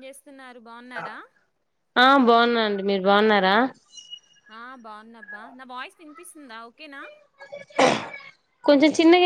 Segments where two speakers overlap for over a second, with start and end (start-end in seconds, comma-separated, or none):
none